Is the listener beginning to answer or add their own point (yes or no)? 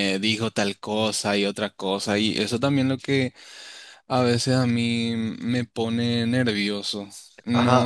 no